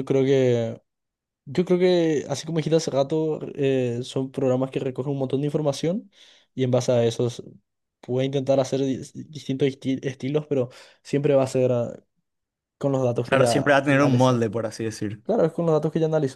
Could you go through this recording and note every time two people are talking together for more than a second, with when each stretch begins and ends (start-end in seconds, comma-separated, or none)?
13.2-14.4